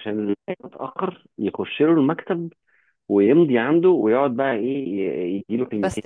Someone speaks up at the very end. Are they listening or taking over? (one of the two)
listening